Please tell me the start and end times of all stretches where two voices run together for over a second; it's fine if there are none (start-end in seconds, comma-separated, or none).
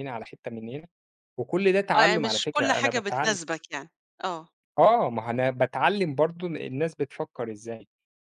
1.9-3.4